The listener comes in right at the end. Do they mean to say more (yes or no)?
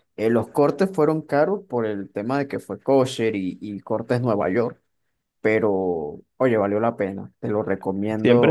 yes